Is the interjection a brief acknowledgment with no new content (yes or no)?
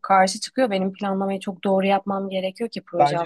no